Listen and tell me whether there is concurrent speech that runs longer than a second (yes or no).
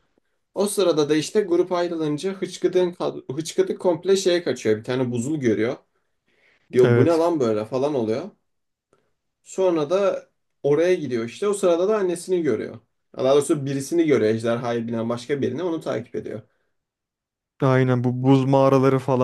no